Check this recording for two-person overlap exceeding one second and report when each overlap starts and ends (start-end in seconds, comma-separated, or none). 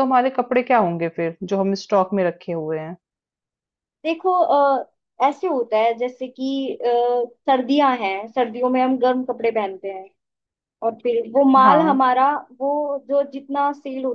none